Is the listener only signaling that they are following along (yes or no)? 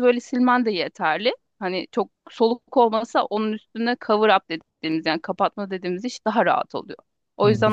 no